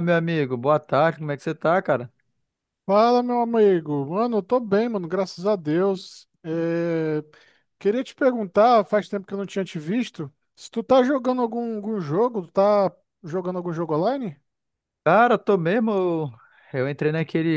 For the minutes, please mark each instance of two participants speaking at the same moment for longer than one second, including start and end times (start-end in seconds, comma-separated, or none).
none